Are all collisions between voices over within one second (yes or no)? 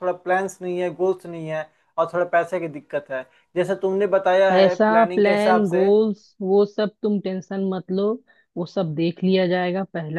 no